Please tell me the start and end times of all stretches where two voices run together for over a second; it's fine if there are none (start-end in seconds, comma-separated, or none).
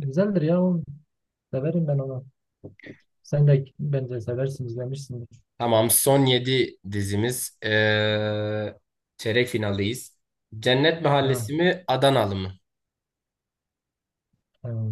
none